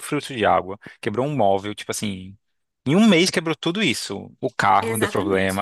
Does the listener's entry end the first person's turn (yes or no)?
no